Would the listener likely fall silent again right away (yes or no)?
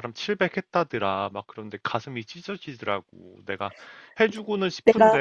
yes